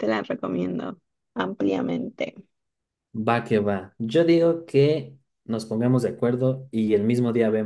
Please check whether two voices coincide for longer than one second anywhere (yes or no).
no